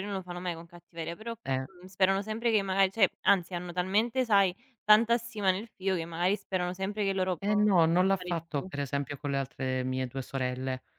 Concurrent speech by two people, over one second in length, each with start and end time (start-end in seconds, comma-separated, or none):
7.4-8.7